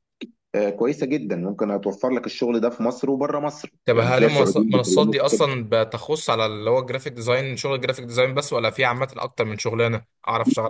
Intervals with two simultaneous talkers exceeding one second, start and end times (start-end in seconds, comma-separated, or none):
3.9-5.2